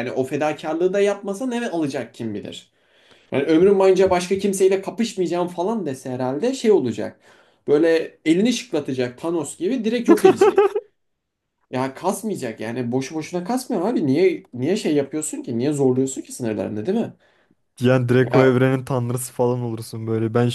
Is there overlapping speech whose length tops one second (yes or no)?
no